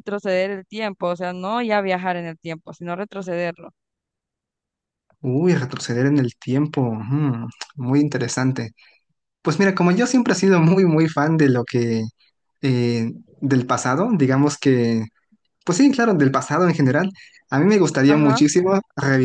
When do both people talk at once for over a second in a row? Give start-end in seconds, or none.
none